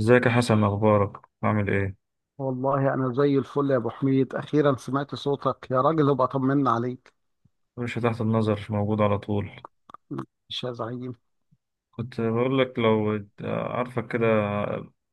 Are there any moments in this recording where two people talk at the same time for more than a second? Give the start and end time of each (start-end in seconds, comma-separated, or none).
none